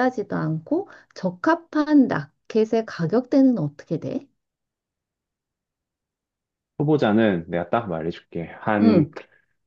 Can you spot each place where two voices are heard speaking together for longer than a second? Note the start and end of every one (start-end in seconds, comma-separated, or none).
none